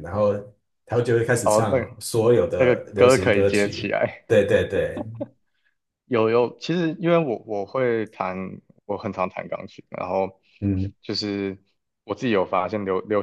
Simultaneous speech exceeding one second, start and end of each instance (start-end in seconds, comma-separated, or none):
2.6-4.2